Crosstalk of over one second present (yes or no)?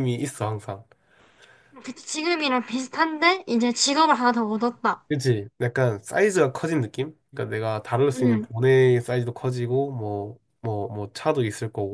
no